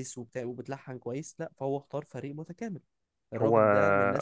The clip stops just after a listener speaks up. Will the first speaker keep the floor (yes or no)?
yes